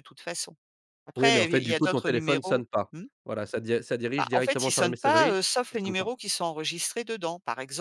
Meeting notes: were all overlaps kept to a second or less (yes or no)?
no